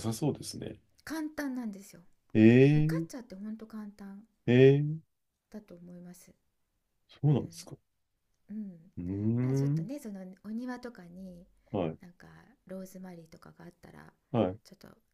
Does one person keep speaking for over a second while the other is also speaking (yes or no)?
no